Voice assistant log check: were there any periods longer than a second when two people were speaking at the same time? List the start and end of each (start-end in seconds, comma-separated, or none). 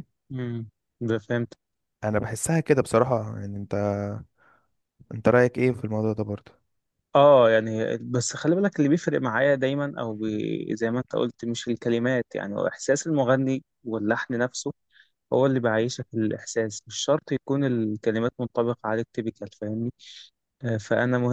none